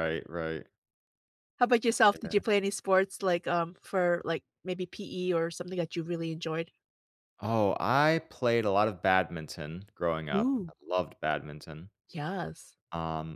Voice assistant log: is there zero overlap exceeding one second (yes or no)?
yes